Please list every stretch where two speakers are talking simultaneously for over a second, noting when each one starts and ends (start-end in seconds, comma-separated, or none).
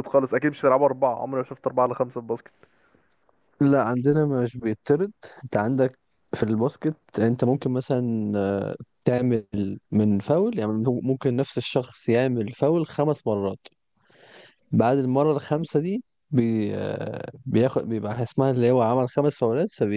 none